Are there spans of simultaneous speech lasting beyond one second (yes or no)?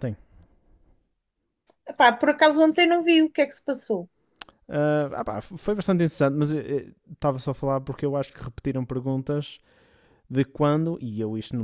no